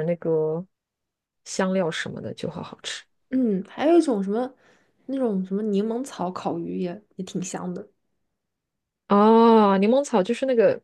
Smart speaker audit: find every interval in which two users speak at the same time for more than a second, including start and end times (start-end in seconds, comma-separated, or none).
none